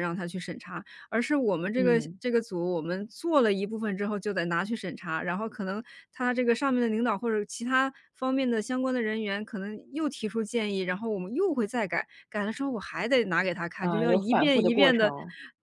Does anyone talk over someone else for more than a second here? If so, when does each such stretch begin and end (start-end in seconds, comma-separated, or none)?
13.8-15.1